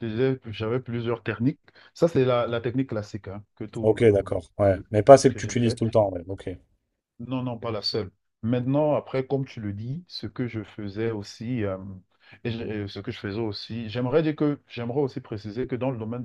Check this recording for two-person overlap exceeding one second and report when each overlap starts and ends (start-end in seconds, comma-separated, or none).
3.8-5.8